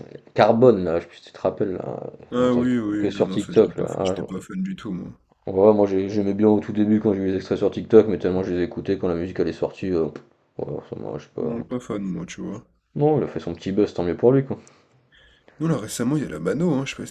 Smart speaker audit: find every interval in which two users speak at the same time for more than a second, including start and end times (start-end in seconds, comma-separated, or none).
2.4-4.2